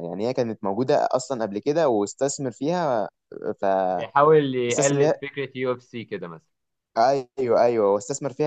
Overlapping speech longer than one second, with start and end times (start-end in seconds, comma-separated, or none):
none